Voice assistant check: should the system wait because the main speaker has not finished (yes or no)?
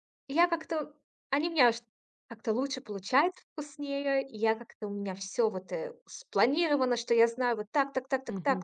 yes